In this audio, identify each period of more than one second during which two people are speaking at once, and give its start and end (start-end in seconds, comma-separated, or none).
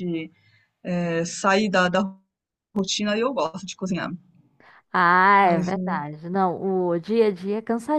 none